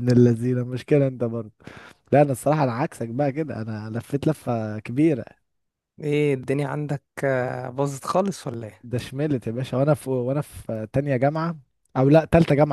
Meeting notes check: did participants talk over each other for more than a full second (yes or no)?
no